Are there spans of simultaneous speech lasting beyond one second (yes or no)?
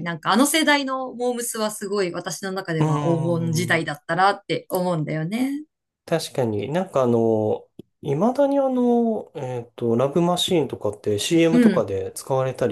no